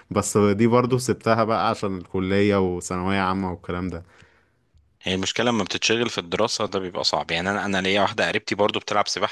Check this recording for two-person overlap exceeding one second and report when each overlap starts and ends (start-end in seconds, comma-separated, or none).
none